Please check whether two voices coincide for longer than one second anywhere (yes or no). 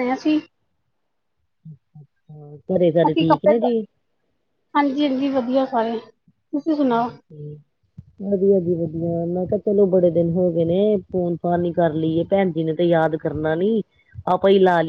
no